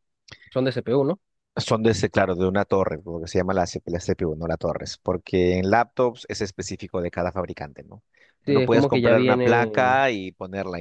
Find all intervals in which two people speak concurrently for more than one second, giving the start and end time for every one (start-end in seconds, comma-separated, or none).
8.4-10.0